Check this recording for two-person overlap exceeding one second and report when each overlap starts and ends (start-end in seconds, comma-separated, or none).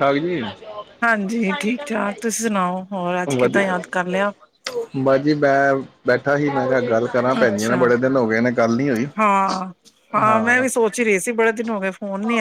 none